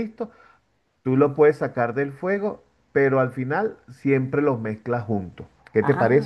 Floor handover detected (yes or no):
yes